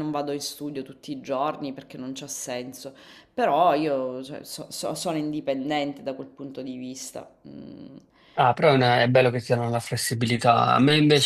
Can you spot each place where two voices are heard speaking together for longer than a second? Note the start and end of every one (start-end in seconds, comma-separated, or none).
none